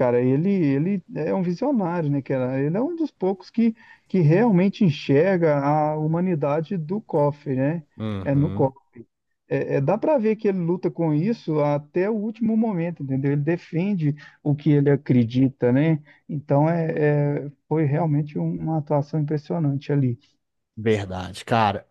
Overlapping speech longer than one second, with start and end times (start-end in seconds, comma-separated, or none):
none